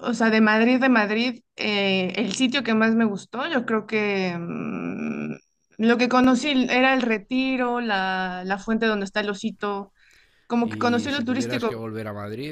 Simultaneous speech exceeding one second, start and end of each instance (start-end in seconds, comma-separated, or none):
10.6-11.9